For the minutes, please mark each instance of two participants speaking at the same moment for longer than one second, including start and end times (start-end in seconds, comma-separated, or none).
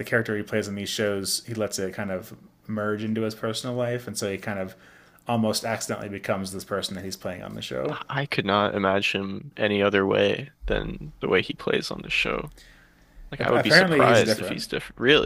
13.4-14.7